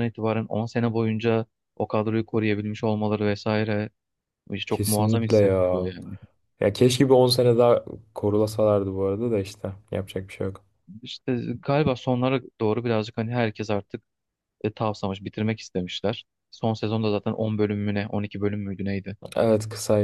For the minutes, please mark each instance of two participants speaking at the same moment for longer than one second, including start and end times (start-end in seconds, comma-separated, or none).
4.7-6.0